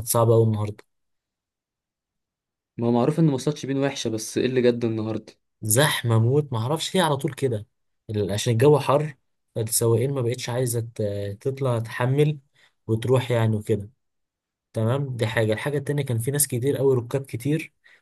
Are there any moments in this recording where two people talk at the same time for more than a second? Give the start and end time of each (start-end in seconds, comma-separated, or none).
none